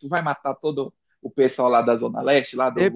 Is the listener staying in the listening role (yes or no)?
no